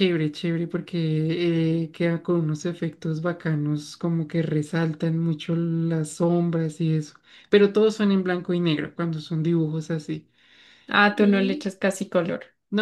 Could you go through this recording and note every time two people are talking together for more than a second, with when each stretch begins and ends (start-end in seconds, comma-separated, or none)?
none